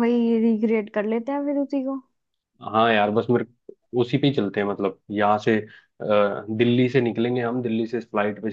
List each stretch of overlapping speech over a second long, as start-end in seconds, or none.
none